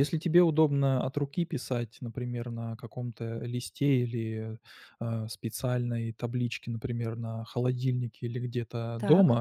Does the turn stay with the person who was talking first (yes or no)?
yes